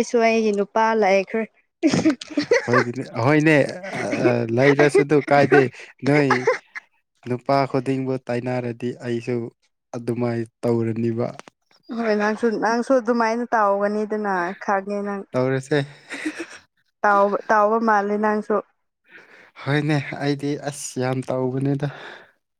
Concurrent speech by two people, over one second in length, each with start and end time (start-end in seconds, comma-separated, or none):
none